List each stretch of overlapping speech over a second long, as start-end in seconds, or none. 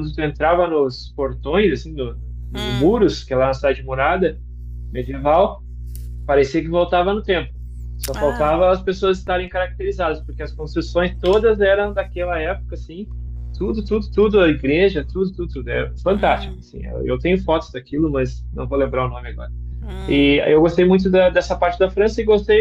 none